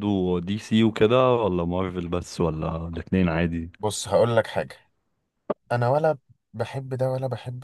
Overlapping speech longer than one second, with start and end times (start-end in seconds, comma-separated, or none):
none